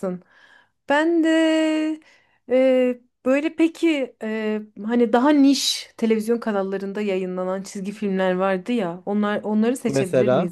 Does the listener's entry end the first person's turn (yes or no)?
no